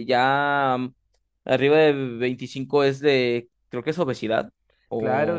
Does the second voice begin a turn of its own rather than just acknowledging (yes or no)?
yes